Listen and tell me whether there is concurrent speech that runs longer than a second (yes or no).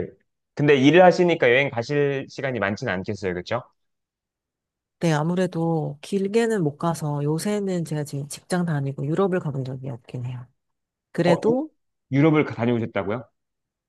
no